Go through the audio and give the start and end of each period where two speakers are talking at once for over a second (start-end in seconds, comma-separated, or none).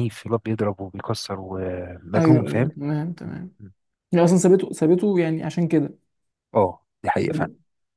none